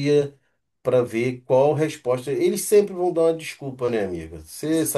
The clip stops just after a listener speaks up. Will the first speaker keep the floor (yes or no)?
no